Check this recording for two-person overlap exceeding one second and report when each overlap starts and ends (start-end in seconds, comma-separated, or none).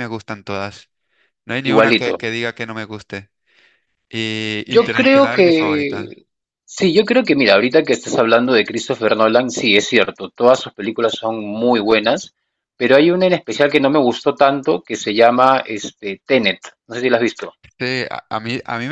4.7-6.2